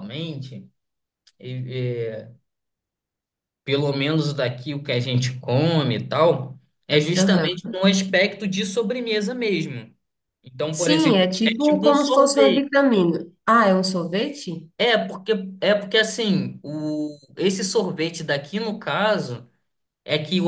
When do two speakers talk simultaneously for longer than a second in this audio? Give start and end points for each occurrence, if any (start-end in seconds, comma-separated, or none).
10.7-12.7